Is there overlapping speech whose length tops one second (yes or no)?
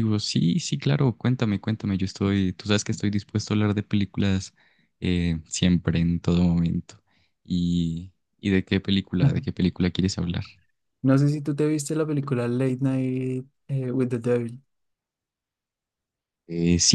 no